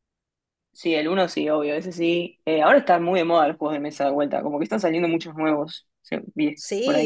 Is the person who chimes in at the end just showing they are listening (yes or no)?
no